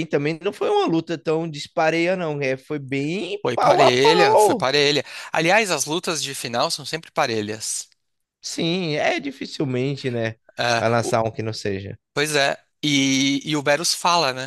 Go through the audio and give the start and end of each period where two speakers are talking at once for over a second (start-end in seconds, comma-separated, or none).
3.4-4.7